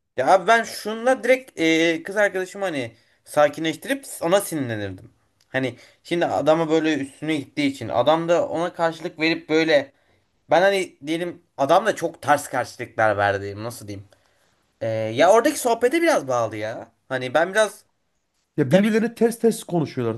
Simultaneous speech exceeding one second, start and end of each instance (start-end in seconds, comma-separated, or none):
none